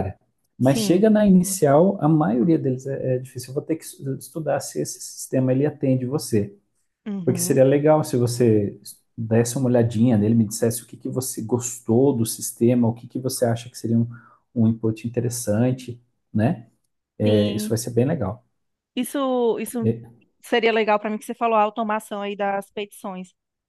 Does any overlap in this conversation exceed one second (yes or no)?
no